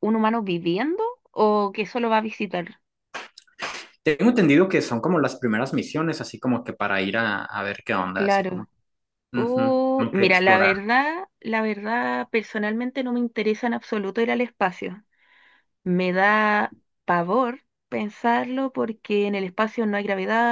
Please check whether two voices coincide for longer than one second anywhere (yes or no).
yes